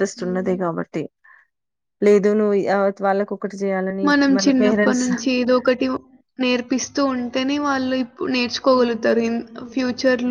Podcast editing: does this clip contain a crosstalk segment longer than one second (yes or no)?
no